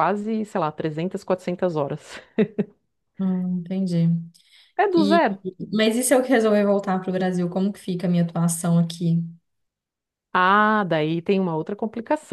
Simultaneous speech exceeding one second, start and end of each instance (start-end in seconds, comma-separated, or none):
none